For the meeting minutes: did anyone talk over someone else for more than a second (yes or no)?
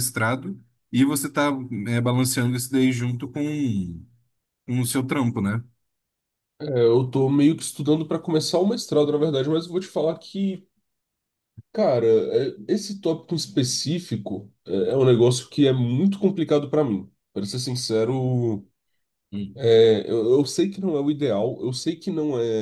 no